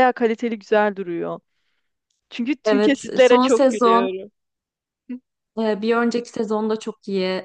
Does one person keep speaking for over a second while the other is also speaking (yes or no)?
yes